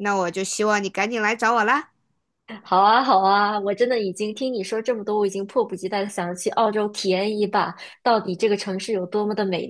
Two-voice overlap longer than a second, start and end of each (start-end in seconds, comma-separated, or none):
none